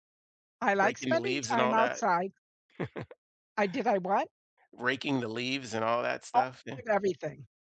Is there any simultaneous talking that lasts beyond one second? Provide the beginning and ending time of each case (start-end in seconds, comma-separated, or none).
0.8-2.0